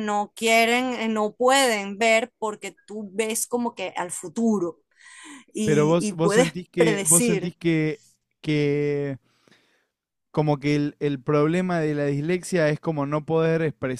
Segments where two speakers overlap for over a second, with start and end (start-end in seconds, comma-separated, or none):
5.6-7.5